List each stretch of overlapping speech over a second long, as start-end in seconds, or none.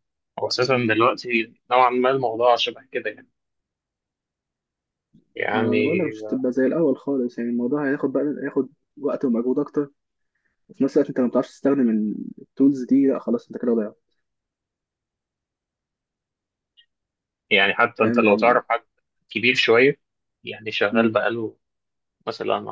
none